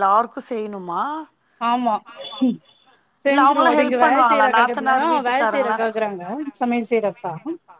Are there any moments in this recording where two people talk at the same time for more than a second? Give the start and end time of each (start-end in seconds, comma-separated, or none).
3.3-5.8